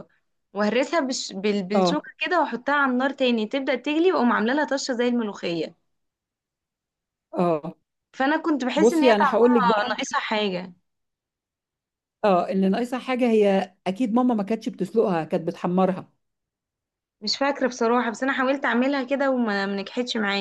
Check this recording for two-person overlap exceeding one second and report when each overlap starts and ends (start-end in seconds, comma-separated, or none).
8.8-10.0